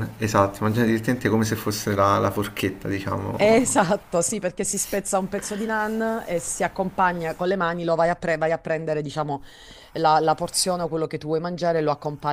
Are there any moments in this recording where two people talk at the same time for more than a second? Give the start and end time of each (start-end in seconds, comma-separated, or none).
none